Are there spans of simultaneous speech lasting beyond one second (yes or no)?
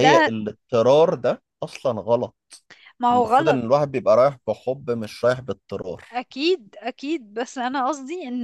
no